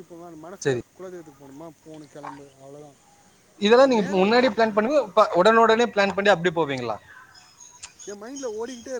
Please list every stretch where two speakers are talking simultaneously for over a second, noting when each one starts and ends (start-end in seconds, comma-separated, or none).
none